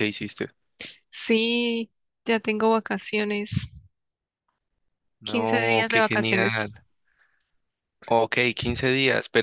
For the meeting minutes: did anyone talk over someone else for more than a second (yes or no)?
yes